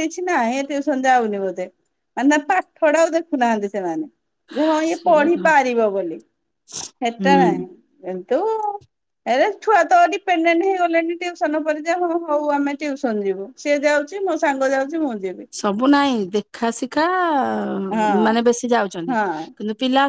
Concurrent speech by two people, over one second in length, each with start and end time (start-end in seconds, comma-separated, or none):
none